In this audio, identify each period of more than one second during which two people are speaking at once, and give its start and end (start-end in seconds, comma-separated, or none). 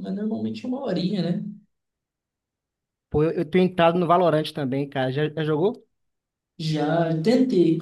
none